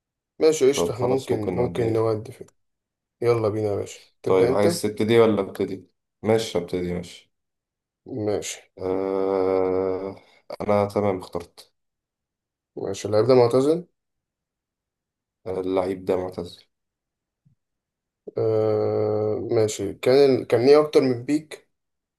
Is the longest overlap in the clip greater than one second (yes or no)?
yes